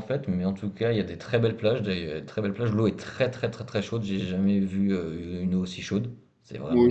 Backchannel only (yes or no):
no